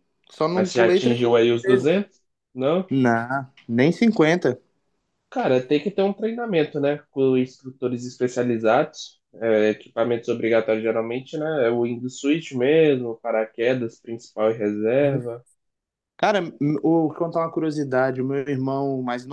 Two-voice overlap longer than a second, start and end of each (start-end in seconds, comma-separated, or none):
0.5-2.0